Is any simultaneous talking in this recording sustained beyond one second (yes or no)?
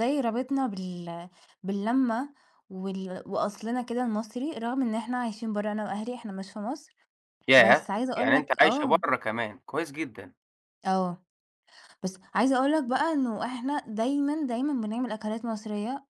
yes